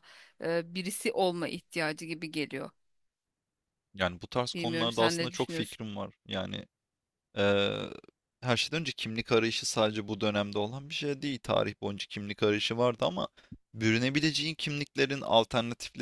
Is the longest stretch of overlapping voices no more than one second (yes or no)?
no